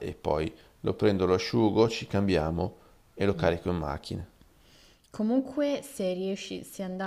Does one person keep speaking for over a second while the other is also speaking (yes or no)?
no